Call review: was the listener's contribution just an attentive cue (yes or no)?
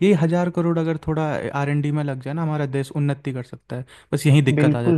no